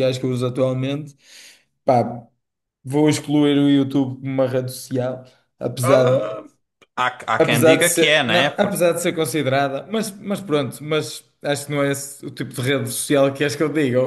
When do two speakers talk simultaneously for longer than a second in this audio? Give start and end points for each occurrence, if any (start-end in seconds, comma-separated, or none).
7.4-8.8